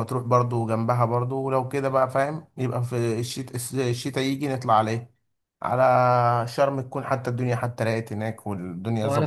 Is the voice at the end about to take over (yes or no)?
yes